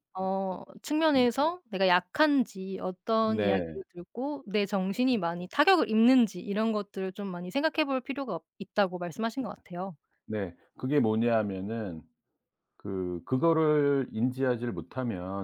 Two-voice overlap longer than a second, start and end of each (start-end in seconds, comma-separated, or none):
none